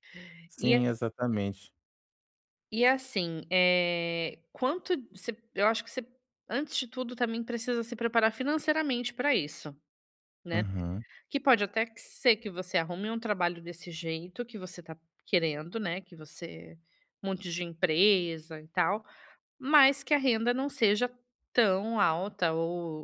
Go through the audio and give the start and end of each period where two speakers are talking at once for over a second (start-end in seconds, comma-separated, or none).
none